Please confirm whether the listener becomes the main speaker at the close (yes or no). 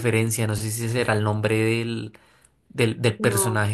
no